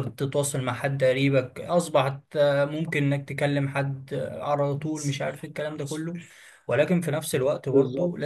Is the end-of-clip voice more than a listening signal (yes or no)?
no